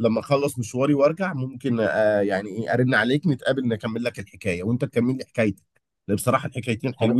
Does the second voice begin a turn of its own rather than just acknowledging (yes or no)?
no